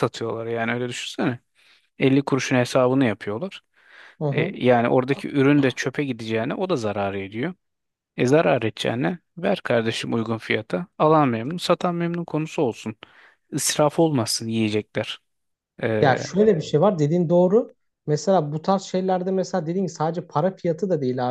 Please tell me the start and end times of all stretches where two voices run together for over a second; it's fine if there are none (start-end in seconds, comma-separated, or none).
none